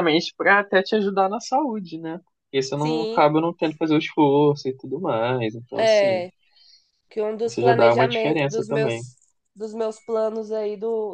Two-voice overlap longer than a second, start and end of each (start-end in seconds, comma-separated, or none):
7.4-9.0